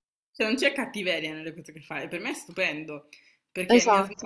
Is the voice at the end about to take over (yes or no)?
no